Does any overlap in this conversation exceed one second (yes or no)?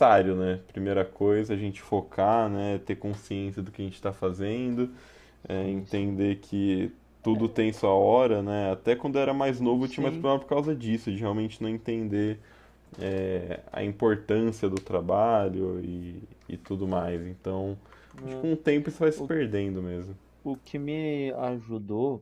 no